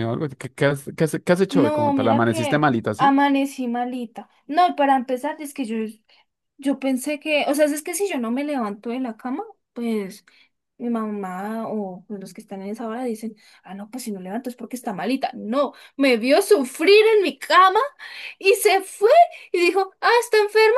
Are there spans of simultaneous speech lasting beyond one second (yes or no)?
yes